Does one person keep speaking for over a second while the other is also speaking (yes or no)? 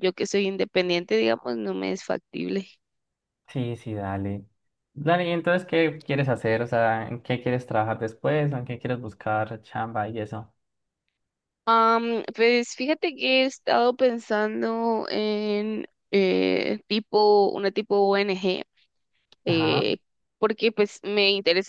no